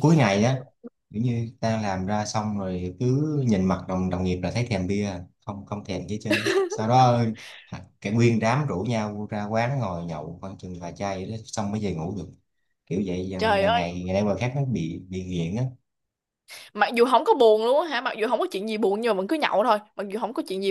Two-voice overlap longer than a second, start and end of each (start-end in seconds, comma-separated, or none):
none